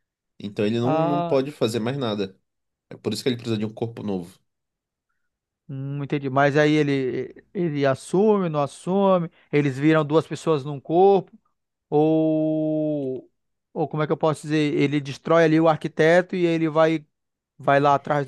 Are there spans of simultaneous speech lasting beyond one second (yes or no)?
no